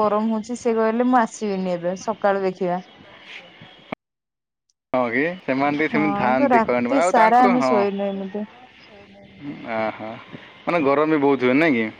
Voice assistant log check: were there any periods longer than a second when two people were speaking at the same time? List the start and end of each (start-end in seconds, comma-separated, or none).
6.0-7.8